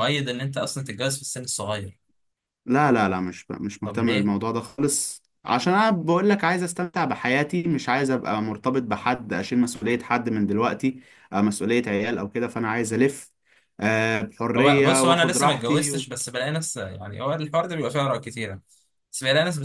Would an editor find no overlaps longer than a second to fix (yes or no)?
no